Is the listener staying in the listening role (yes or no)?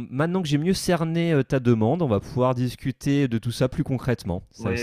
no